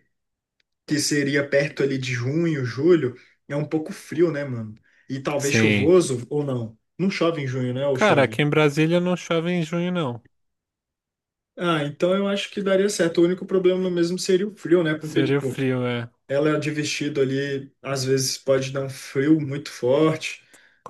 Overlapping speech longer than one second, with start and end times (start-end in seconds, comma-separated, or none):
none